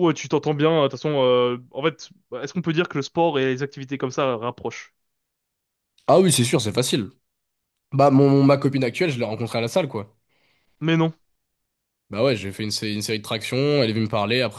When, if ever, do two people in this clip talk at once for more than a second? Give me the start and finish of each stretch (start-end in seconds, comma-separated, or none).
none